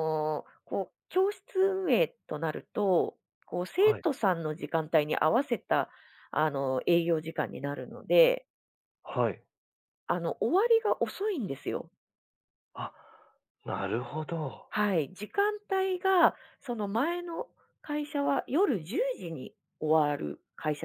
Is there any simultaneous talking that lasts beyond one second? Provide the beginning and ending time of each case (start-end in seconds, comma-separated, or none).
none